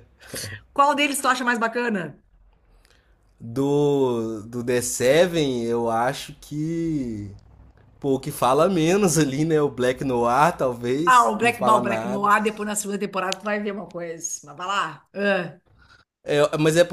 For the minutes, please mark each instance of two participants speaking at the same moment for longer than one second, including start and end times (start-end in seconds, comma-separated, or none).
11.0-12.3